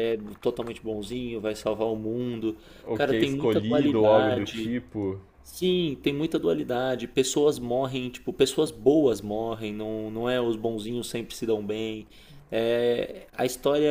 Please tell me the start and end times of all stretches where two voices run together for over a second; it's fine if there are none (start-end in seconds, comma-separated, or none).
2.9-4.8